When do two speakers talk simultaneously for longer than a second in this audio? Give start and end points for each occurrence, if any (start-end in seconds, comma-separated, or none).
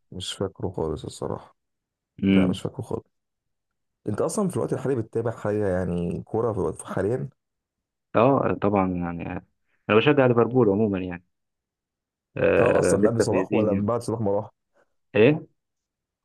12.6-13.9